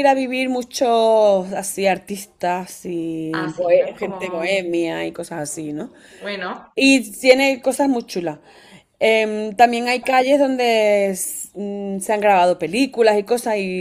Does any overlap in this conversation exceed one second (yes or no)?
yes